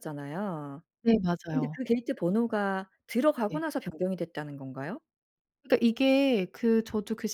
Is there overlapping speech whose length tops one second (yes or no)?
no